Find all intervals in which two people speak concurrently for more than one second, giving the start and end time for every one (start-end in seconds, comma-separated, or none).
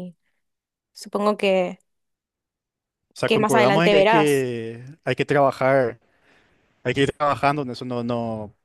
3.2-4.5